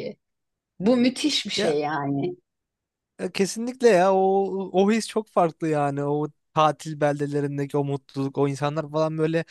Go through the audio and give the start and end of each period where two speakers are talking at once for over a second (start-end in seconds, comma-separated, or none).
none